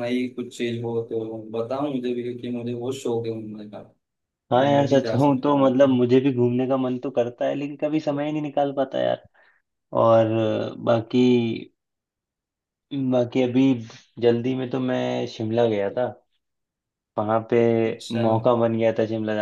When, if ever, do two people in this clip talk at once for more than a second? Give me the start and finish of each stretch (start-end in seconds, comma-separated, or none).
4.5-5.9